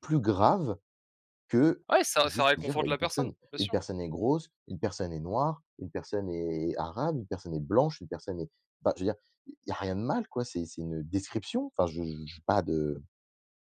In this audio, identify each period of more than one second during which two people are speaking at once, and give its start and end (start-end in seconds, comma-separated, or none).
2.2-3.8